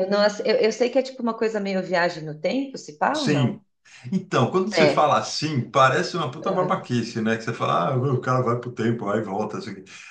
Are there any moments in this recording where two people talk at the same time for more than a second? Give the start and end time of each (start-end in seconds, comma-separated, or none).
none